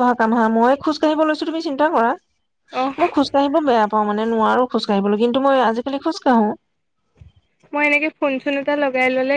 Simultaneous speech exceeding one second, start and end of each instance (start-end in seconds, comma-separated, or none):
none